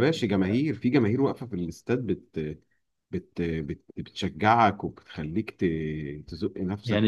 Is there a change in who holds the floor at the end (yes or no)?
yes